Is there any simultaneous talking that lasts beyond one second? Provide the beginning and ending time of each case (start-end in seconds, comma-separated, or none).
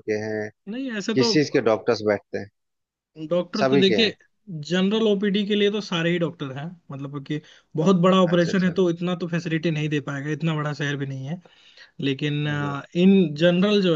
none